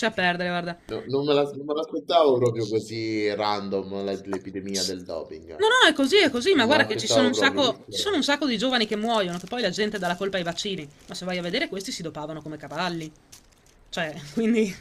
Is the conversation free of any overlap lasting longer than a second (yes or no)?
no